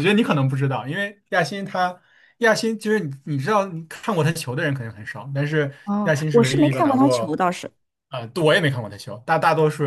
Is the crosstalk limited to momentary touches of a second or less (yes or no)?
no